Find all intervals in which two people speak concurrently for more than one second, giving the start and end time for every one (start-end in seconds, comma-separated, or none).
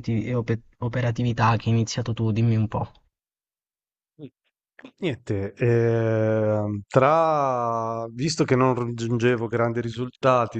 none